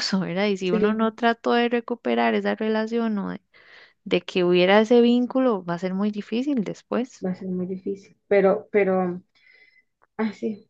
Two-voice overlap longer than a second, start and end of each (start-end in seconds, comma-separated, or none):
none